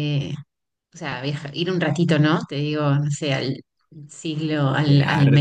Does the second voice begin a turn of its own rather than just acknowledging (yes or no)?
yes